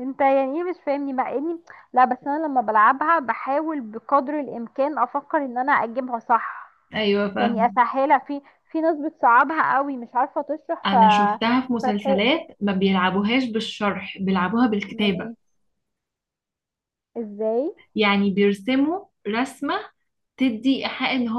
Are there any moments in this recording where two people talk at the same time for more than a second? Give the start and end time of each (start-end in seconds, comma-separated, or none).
none